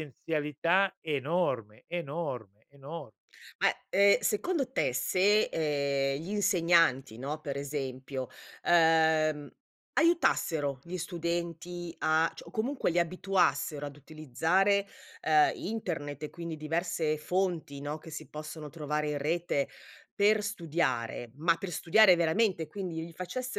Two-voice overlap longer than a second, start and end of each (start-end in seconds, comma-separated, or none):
none